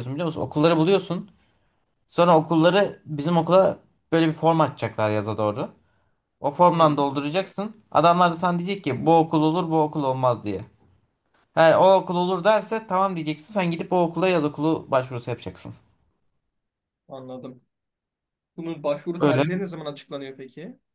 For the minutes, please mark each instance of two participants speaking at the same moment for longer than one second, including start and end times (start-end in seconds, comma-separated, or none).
none